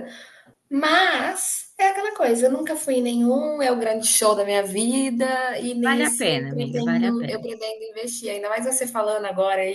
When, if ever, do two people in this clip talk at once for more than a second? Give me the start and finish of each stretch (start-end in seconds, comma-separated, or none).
5.8-7.5